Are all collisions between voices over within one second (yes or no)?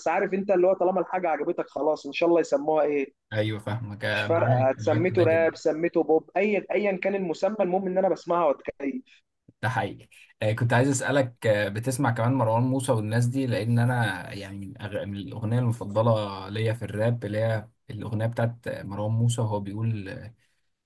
no